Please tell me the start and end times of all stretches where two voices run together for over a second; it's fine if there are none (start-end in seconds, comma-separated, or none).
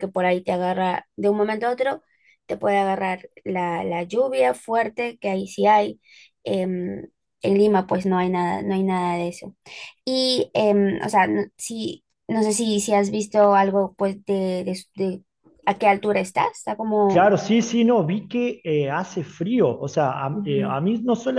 none